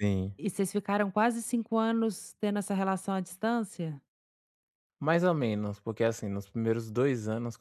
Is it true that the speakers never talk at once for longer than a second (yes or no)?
yes